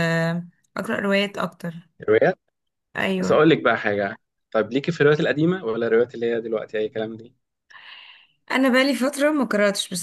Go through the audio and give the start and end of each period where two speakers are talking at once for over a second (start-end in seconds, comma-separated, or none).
none